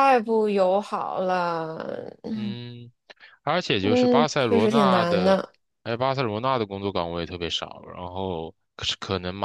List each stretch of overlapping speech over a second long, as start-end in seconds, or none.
3.8-5.4